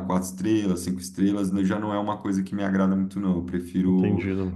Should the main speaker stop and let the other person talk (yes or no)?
no